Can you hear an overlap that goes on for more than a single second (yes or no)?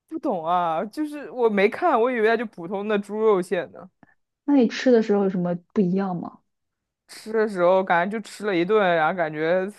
no